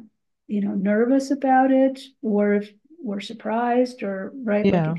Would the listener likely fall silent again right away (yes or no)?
yes